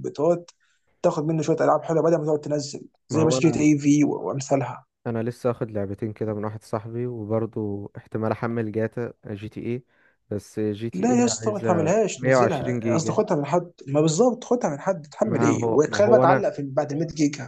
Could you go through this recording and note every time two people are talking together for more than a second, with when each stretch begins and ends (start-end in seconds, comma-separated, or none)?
10.9-13.2, 15.3-16.5